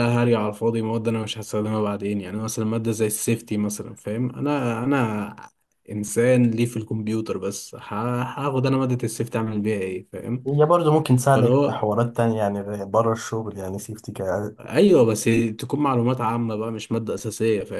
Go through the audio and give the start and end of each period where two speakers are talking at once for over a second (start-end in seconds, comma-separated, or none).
none